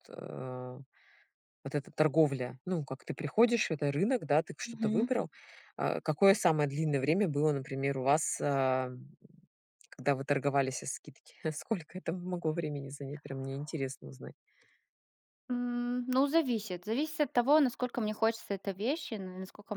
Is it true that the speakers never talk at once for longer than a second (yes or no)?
yes